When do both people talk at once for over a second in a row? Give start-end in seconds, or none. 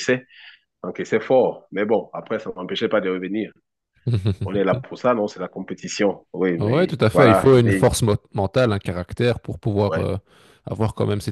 6.6-8.0